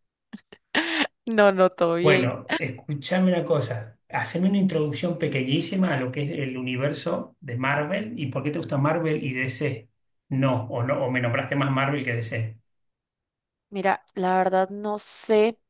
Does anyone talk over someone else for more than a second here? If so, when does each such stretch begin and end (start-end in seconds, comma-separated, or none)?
none